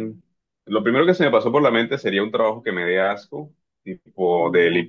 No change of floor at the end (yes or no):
yes